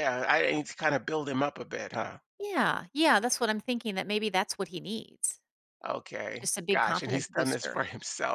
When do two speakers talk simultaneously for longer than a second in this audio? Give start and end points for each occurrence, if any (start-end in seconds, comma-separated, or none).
6.4-7.8